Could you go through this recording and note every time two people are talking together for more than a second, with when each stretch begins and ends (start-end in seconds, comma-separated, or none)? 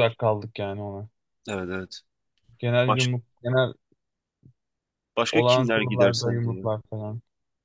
5.4-6.7